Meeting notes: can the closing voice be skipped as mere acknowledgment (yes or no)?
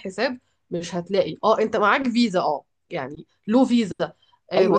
no